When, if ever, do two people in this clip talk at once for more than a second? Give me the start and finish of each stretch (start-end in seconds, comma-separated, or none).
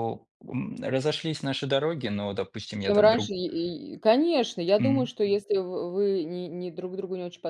none